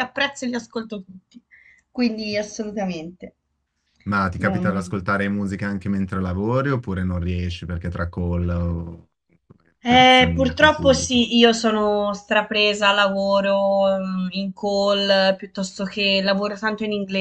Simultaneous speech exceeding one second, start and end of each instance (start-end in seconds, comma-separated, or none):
9.8-11.2